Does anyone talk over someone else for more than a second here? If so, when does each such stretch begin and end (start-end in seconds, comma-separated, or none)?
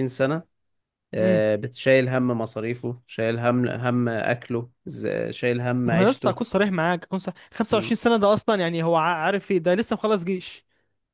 none